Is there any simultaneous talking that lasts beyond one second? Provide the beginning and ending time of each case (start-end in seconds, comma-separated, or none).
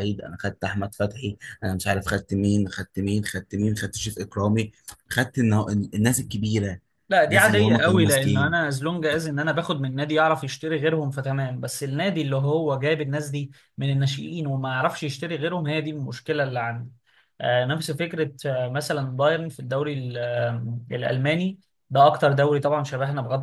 7.3-8.7